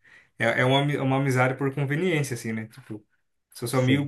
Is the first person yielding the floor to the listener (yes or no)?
no